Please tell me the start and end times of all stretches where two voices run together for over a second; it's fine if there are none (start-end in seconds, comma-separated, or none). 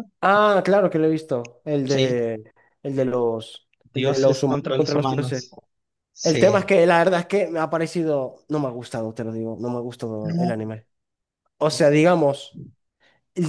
3.9-5.4